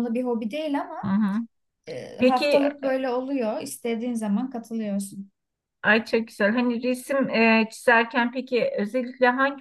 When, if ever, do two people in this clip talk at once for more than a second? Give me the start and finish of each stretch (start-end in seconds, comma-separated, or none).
none